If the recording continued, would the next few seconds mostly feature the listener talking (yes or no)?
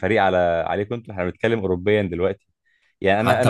no